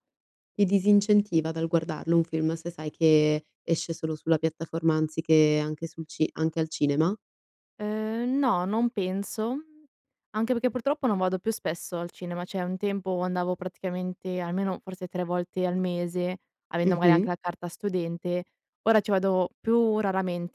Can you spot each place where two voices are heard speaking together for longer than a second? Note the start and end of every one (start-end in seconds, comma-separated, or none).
none